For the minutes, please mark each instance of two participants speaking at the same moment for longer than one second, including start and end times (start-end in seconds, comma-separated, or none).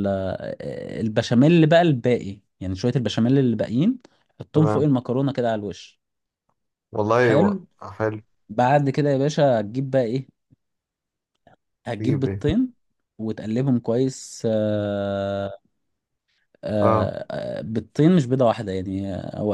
none